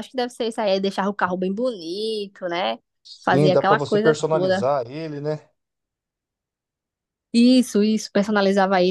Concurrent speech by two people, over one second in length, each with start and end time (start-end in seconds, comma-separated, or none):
3.2-4.7